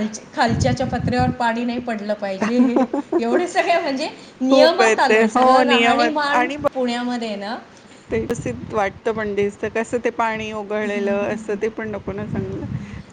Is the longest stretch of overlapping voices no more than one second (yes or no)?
no